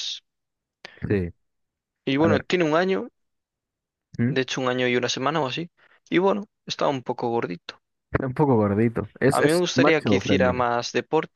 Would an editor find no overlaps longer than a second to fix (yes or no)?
no